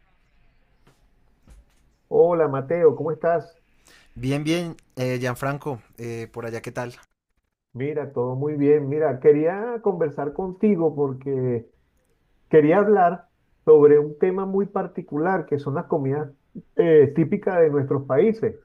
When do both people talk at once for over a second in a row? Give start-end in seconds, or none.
none